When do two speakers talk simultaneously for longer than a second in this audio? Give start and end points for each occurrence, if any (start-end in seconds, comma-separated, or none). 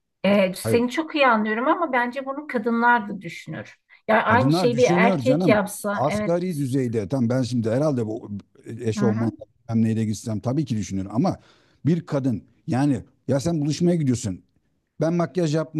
4.3-6.3